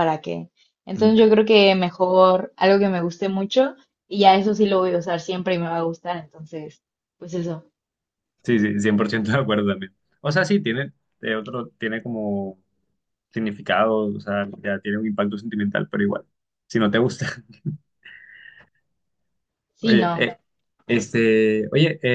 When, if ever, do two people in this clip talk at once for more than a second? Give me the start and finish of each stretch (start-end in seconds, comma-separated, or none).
none